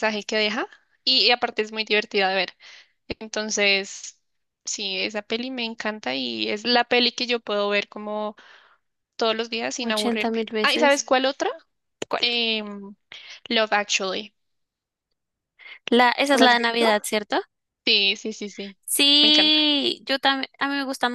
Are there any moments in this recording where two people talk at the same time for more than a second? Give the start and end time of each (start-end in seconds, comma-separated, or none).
9.8-11.0